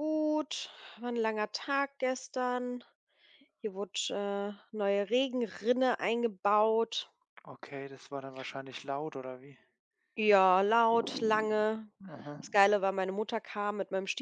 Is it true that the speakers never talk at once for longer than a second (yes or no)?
yes